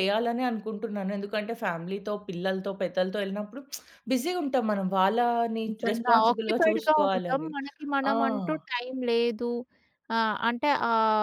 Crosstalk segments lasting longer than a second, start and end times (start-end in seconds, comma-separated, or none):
5.7-7.5